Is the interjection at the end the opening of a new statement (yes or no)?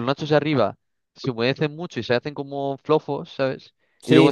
no